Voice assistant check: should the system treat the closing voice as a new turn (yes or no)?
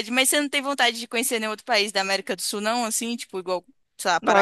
yes